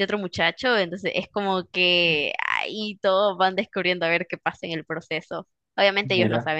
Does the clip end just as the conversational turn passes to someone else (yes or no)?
no